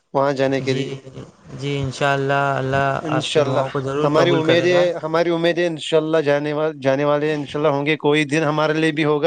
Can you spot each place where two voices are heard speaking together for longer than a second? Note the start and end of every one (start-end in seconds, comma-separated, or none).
3.1-4.8